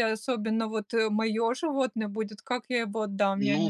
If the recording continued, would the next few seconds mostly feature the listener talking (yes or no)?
yes